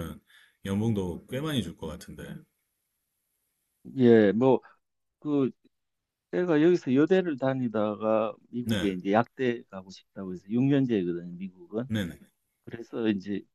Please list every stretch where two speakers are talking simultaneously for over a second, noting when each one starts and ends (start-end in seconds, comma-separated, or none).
none